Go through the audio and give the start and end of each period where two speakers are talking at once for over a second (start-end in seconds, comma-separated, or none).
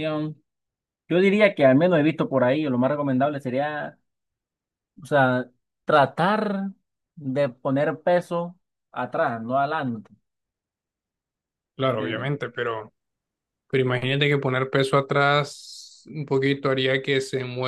none